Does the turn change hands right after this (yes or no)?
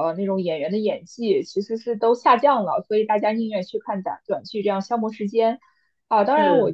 no